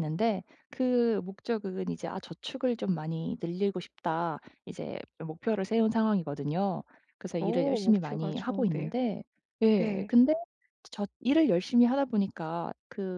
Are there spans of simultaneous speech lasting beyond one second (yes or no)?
yes